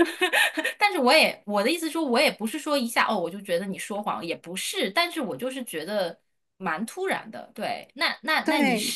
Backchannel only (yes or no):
yes